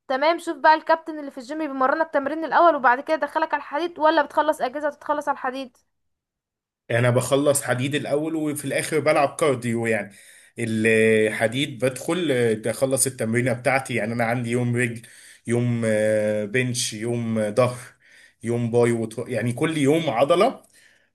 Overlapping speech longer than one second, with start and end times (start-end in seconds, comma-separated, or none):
none